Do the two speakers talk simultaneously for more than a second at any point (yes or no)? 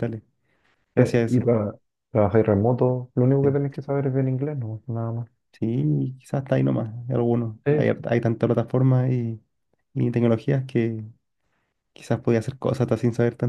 no